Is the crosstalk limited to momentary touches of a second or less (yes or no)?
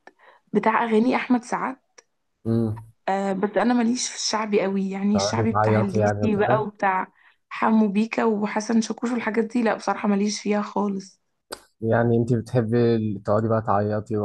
no